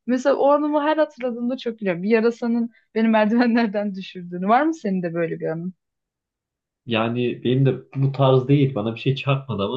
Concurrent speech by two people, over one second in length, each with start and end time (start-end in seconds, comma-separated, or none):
none